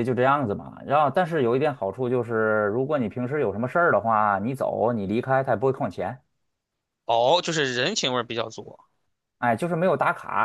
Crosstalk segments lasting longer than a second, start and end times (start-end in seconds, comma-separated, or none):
none